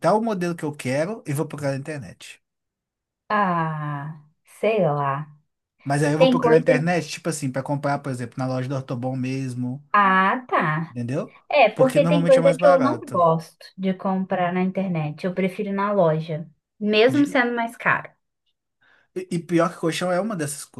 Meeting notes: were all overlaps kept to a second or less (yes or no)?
no